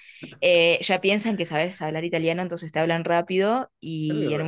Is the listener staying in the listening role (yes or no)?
yes